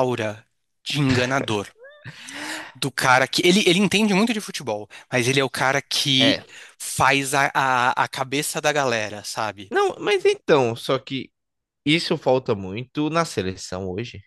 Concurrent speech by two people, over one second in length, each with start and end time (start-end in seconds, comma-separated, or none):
none